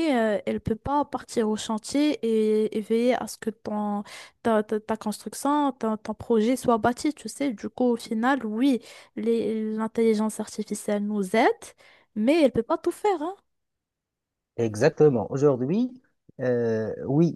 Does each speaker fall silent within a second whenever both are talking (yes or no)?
yes